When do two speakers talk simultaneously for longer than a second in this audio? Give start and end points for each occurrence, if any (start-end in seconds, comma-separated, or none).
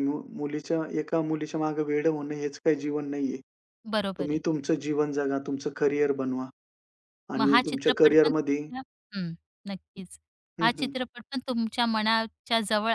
7.4-8.6